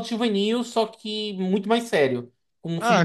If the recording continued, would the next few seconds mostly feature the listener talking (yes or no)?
yes